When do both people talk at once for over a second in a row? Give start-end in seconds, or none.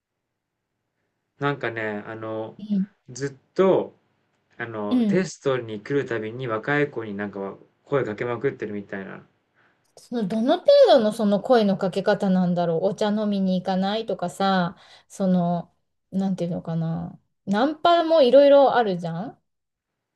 none